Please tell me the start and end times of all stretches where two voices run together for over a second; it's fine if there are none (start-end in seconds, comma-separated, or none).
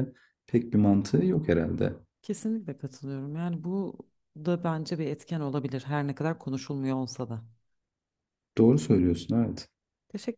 none